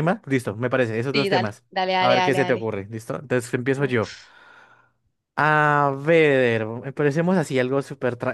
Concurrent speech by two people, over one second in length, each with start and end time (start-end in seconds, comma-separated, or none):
1.1-2.7